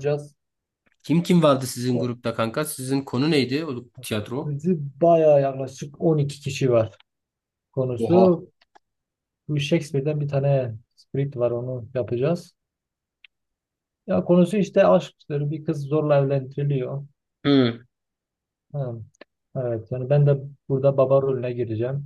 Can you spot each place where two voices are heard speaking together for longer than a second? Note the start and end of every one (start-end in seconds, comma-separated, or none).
none